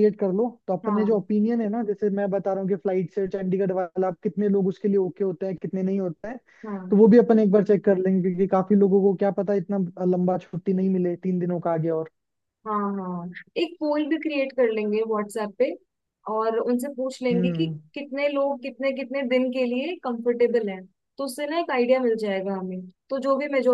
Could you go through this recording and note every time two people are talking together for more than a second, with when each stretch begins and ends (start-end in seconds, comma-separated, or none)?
none